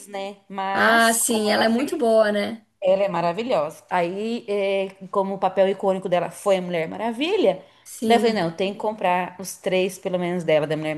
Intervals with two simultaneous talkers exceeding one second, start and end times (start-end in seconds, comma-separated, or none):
0.7-2.0